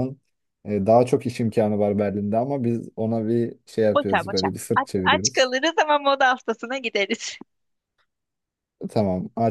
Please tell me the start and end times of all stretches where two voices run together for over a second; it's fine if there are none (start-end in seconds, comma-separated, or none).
3.9-5.5